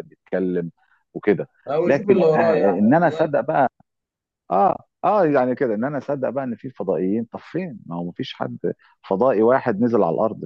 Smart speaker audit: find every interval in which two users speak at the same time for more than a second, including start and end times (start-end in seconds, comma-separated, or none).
1.9-3.3